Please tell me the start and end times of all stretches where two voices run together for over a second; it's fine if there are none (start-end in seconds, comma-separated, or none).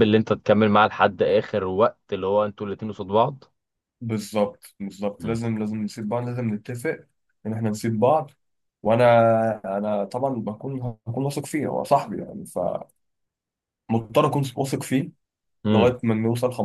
none